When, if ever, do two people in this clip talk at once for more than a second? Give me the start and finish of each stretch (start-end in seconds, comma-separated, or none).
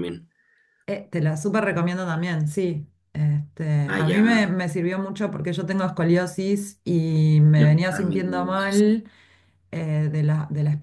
7.5-9.0